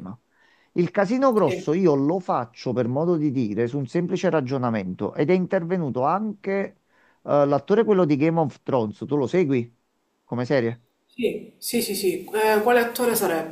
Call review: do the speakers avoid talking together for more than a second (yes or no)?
yes